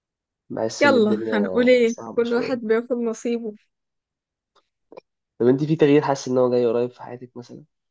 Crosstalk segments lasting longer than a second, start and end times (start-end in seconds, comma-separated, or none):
0.8-2.6